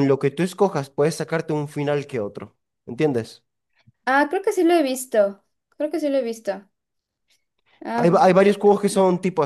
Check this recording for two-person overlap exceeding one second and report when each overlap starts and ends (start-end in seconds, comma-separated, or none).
none